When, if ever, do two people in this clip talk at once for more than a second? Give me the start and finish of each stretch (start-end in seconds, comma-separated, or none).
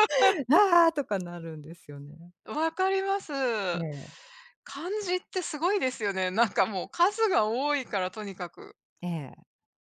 none